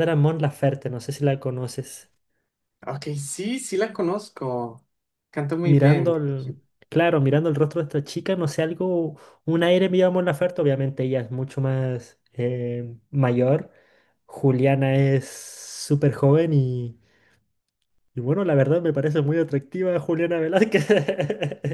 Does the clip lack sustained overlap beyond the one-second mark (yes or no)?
yes